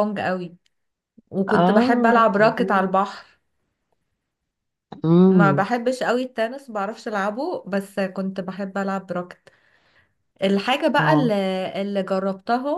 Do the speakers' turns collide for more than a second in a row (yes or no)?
yes